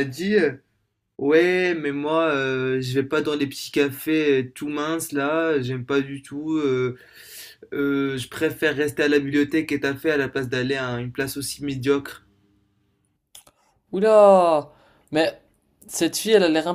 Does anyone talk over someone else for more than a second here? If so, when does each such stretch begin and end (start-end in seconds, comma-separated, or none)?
none